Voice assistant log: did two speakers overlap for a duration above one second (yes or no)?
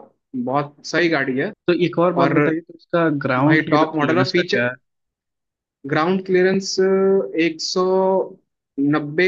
yes